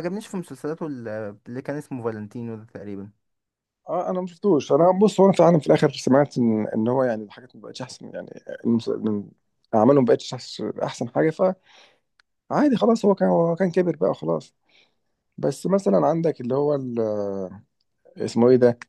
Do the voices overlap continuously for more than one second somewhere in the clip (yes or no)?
no